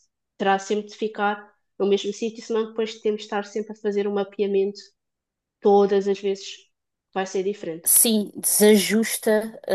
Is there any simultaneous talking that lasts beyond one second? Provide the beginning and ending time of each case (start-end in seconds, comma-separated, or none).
none